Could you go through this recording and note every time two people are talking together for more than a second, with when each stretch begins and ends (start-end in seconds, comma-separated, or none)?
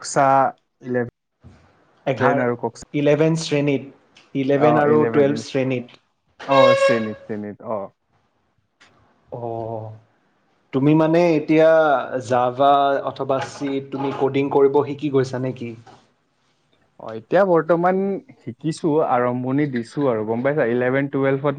none